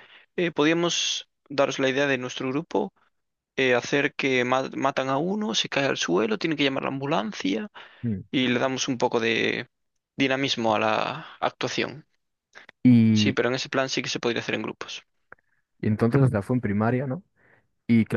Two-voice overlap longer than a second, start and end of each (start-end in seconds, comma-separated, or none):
none